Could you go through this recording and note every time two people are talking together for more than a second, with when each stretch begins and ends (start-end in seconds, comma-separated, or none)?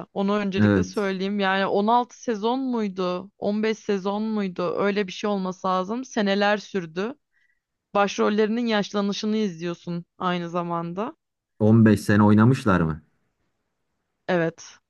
none